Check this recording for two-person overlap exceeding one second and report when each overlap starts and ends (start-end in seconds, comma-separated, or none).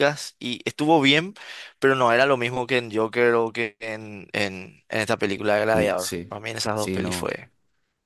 5.7-7.4